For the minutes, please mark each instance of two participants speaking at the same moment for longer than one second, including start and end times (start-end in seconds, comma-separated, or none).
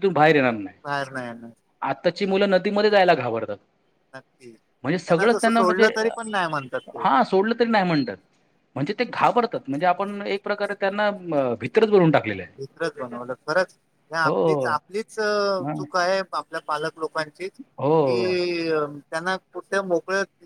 none